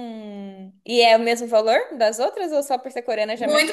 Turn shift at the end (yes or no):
yes